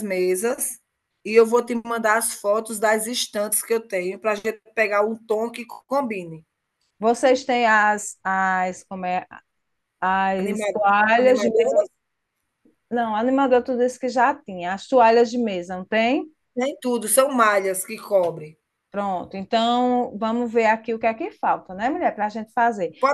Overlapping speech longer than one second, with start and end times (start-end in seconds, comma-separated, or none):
10.4-11.8